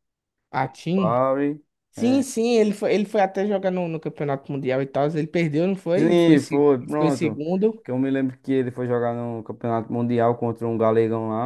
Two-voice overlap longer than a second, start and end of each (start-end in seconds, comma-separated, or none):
6.0-7.4